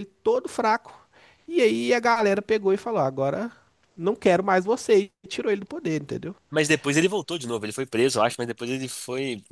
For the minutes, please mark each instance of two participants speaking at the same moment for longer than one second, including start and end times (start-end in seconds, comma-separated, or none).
none